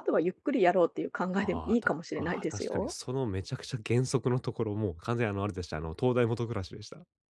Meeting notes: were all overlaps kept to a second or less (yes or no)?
no